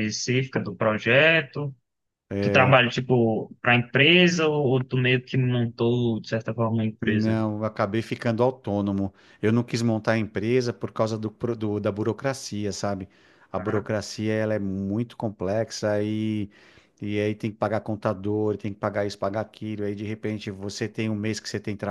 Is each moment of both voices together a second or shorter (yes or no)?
yes